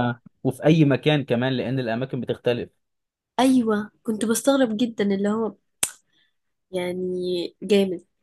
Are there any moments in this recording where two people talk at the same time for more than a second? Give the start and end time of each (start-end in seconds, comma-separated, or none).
none